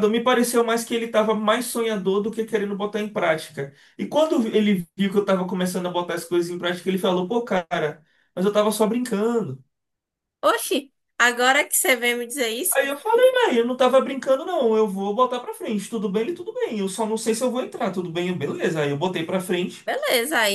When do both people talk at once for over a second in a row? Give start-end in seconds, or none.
none